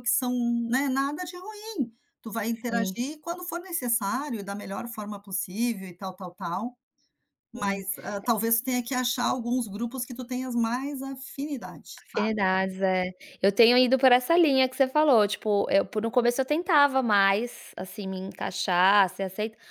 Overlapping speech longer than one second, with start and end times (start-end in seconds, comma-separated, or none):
none